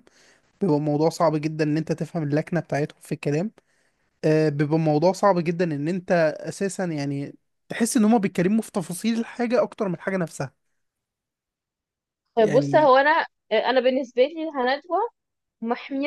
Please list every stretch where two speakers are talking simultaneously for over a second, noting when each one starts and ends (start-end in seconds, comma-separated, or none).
none